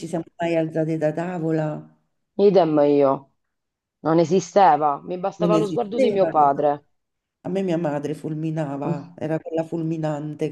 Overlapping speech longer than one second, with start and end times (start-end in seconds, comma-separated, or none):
5.4-6.7